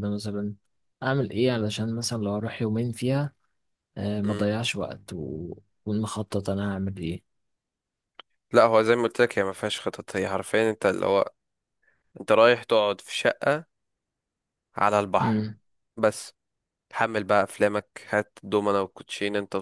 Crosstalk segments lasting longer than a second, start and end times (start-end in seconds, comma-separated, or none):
none